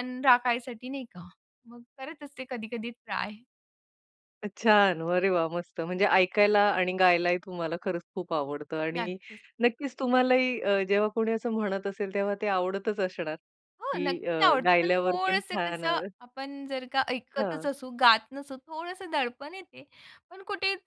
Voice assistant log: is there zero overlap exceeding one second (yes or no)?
no